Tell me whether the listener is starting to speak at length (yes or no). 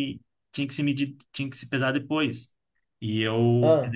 no